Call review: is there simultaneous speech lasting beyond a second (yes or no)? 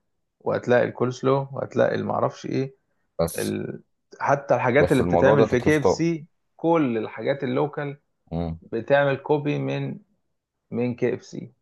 yes